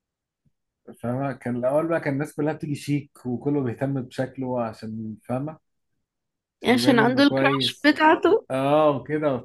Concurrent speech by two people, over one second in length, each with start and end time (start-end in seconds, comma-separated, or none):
6.7-7.9